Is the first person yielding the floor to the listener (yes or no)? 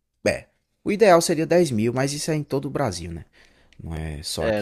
yes